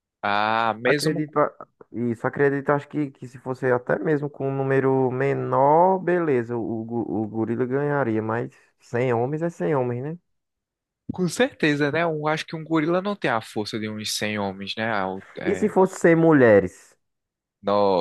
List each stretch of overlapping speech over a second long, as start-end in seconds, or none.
none